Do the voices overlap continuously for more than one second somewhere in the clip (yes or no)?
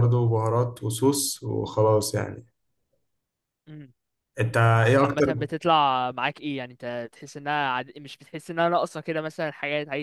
no